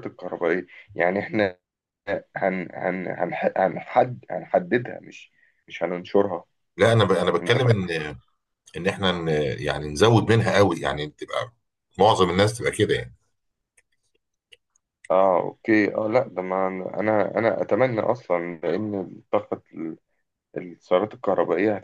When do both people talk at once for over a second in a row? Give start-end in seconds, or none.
none